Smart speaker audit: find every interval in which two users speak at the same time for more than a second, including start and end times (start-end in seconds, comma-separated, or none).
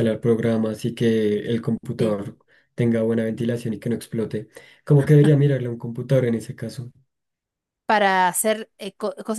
none